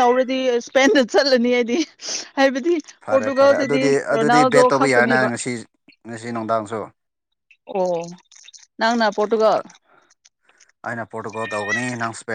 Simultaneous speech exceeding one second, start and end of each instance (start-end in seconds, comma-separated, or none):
3.1-5.3